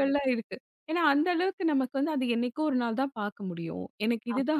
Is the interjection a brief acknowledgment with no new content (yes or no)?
yes